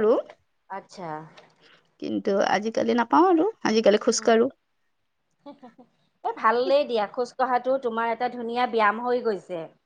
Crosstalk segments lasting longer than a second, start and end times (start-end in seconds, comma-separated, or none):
none